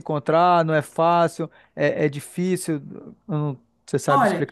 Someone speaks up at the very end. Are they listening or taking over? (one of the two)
taking over